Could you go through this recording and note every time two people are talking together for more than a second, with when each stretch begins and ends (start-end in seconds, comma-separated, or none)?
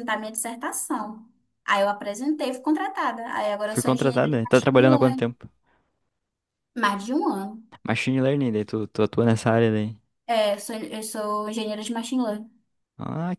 3.6-5.3